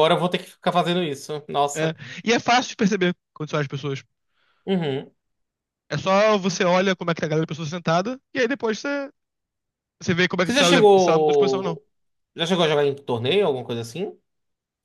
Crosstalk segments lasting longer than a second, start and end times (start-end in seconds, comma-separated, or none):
10.4-11.8